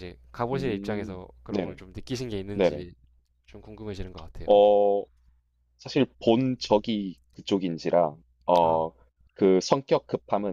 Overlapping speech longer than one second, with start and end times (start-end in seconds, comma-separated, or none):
0.5-1.8